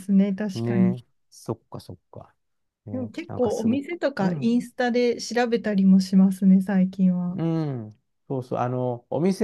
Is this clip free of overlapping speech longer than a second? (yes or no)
no